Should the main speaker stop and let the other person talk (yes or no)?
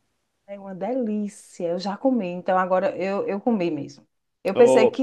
no